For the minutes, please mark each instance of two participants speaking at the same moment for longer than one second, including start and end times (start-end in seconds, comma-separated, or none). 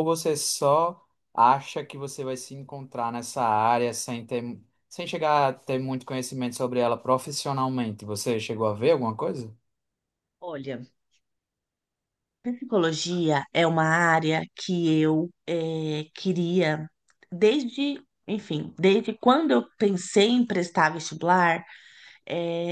none